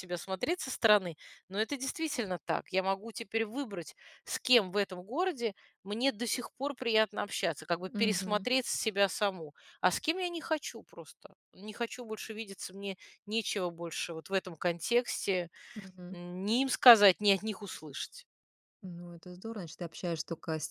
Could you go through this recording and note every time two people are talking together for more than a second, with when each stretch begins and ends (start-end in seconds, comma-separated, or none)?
none